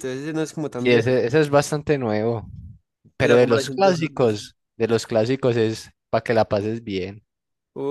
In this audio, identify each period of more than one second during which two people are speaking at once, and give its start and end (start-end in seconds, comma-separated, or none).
3.2-4.4